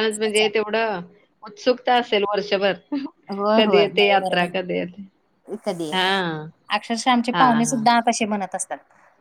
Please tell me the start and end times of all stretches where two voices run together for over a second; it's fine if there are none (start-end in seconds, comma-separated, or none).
3.6-5.1